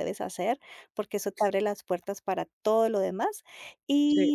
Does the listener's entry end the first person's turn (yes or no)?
no